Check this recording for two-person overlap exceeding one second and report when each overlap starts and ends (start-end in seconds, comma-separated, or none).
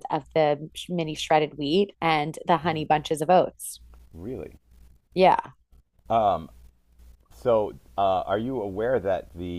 none